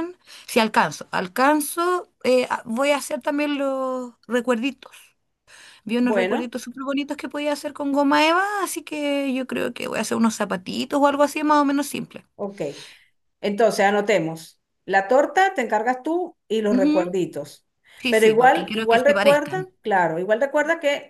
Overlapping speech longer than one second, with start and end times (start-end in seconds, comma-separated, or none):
18.1-19.7